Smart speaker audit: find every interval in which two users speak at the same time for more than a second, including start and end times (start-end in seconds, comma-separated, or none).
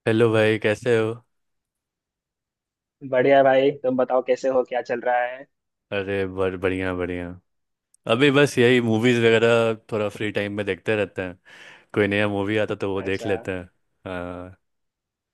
none